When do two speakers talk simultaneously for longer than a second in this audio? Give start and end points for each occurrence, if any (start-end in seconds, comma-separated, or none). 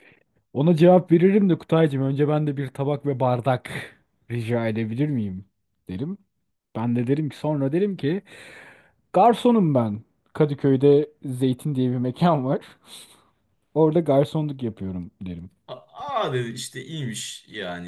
none